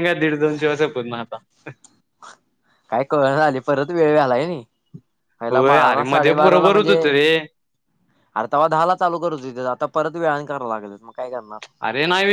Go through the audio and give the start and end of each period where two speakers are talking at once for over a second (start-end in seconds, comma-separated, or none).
5.5-7.0